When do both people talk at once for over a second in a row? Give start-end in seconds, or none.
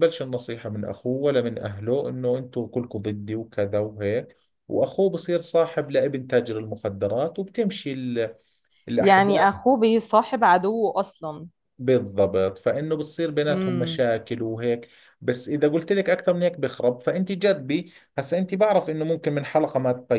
none